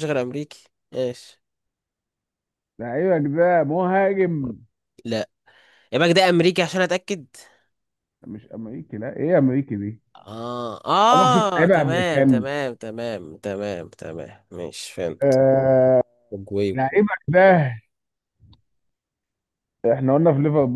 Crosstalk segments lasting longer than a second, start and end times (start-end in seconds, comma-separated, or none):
11.1-12.5